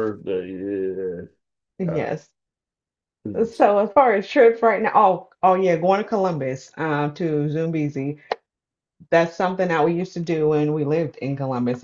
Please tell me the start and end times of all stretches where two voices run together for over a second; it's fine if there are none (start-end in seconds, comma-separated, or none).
none